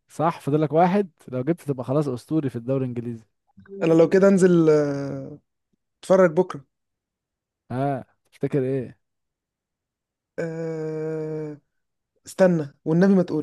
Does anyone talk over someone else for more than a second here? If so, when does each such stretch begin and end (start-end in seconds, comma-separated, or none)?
none